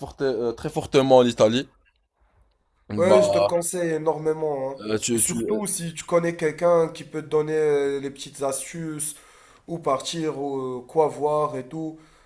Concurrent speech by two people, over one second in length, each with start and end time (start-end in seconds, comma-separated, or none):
none